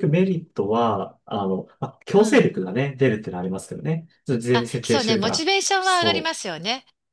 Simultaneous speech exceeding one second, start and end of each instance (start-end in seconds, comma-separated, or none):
4.5-6.4